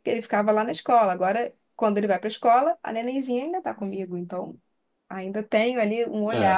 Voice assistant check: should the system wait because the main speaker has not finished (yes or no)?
yes